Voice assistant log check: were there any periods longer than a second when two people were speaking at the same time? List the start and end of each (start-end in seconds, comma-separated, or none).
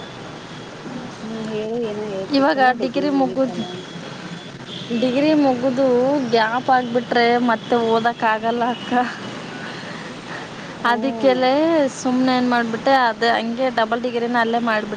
none